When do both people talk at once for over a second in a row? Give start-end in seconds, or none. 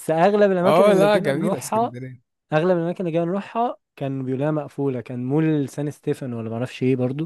0.6-1.9